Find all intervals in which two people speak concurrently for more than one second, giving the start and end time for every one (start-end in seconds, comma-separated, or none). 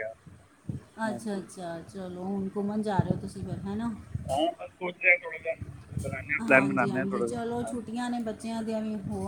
6.5-7.9